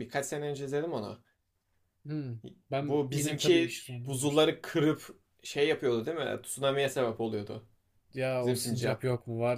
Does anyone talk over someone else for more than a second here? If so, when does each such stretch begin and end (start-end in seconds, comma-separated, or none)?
2.8-4.5